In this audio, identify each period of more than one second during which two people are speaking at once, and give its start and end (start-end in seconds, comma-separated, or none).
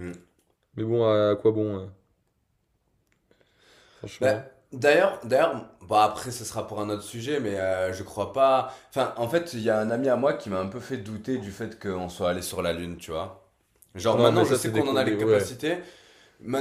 14.1-15.5